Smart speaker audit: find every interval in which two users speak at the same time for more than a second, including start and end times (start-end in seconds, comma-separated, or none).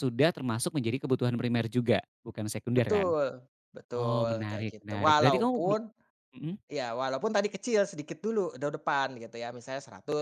4.0-5.8